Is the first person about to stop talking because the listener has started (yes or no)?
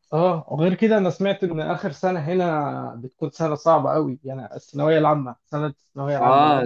yes